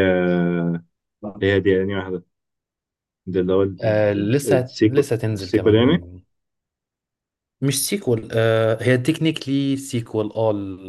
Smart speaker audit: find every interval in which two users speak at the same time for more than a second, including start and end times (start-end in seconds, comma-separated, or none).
4.2-6.1